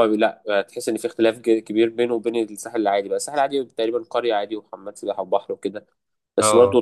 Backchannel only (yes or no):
yes